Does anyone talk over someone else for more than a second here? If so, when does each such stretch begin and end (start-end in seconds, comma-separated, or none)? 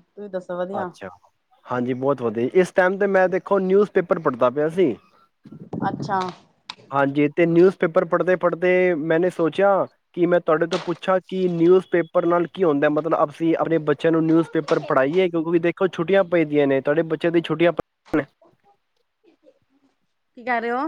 none